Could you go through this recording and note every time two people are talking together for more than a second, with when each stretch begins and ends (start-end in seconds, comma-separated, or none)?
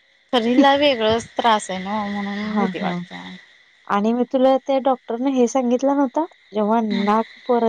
none